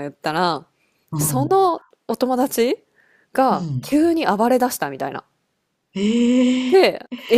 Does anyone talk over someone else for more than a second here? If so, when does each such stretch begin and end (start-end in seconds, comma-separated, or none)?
none